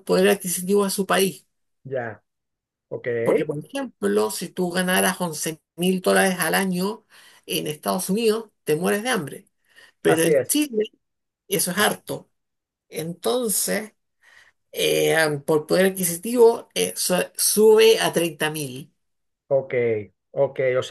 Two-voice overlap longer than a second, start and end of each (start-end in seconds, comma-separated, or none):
none